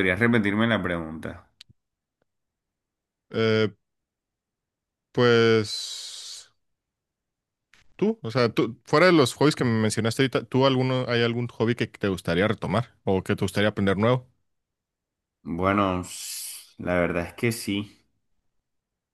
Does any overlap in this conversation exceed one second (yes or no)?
no